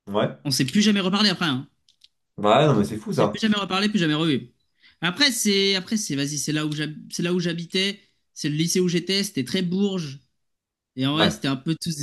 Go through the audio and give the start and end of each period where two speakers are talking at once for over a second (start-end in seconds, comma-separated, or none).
none